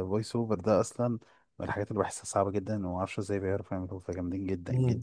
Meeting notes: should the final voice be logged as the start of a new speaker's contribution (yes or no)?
yes